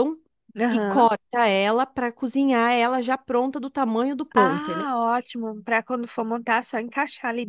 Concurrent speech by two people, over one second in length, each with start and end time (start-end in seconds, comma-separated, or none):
none